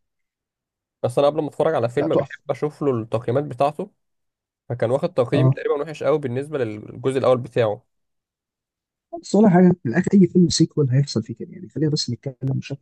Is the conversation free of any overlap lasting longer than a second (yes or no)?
yes